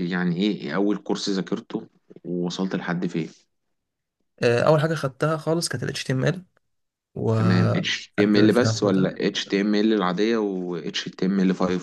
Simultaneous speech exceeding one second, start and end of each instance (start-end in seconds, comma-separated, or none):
7.4-9.2